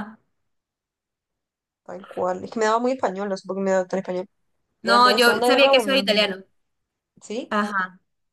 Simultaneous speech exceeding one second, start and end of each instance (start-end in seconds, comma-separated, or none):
4.8-6.3